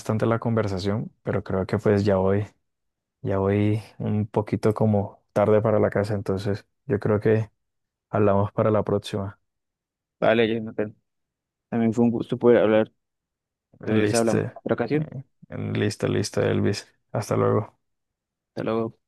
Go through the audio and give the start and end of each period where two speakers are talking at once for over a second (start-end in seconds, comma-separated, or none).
13.8-15.1